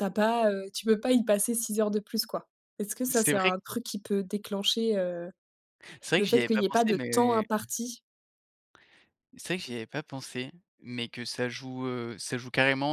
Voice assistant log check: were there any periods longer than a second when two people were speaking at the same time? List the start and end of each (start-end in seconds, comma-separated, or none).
6.2-7.5